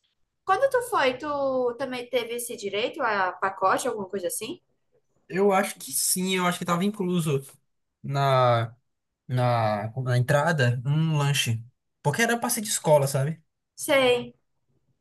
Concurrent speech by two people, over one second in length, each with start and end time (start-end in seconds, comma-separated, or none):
none